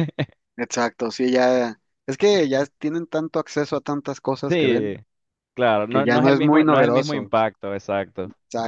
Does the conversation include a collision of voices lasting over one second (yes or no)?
yes